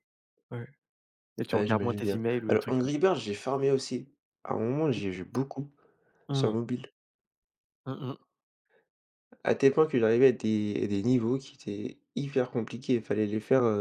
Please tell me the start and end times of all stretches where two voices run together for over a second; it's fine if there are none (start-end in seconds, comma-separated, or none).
1.5-3.0